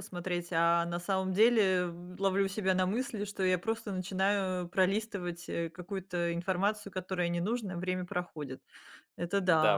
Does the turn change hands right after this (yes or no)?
yes